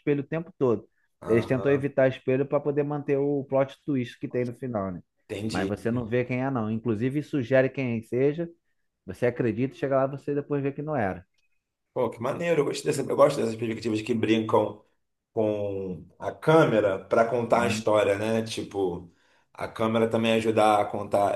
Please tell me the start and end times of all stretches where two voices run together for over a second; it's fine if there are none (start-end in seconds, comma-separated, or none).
none